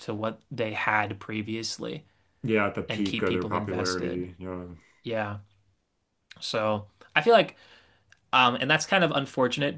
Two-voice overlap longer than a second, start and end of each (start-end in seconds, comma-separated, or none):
2.9-4.3